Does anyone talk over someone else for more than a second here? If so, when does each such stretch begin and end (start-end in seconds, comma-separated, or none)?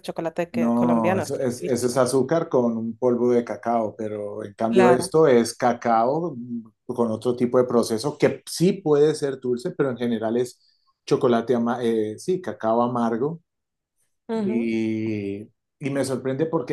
0.5-2.0